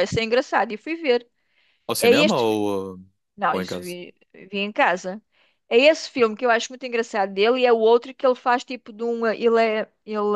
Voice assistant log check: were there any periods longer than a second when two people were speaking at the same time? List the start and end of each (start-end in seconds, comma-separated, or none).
none